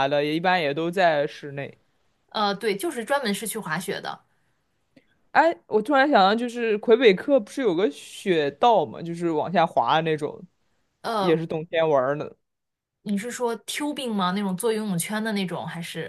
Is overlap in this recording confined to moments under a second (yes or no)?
yes